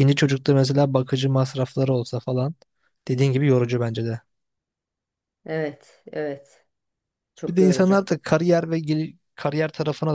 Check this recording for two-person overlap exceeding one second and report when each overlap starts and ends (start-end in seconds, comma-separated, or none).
none